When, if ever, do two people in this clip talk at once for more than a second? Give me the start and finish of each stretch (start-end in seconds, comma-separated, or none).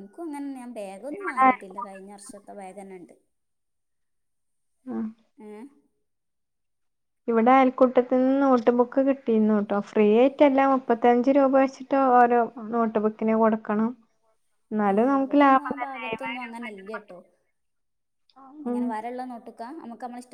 14.9-17.2